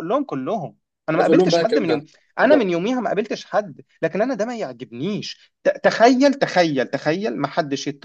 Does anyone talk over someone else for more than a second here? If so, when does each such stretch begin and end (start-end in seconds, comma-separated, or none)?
1.1-2.7